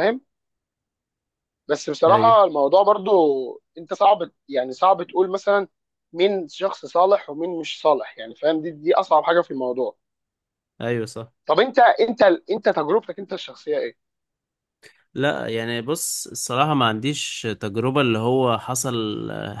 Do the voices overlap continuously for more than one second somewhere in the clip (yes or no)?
no